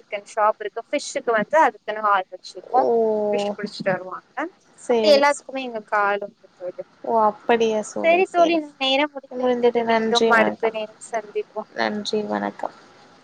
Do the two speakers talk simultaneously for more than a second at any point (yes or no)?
yes